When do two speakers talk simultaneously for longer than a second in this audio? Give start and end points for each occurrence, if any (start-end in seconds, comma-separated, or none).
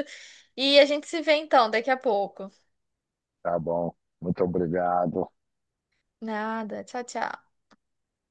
none